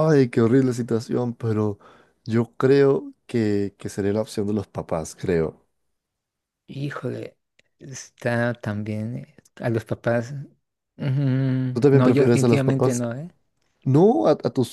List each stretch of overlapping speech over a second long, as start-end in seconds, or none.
11.7-13.1